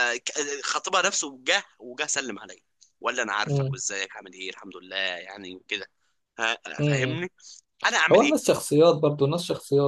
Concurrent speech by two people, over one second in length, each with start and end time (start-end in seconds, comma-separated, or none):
none